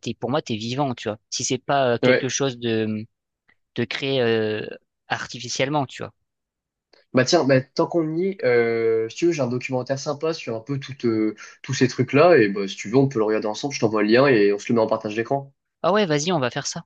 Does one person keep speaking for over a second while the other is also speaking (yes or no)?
no